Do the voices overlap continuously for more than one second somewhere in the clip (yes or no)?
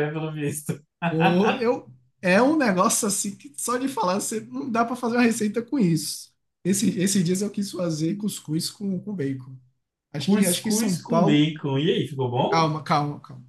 yes